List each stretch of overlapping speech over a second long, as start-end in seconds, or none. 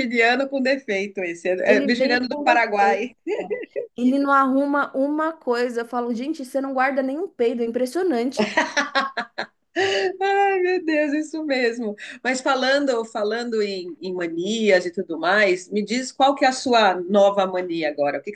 1.7-3.1